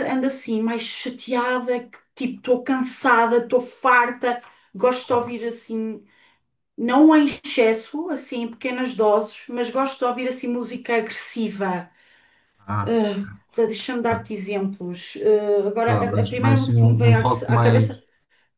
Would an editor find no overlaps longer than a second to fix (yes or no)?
no